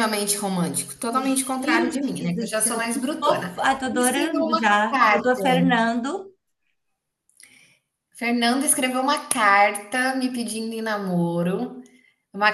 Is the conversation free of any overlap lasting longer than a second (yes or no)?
no